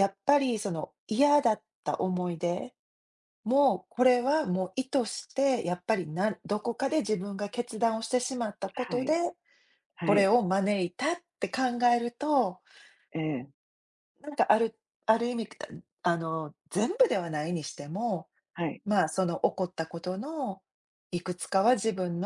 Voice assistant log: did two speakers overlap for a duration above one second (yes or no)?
no